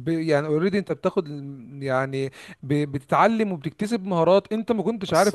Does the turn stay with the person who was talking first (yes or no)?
yes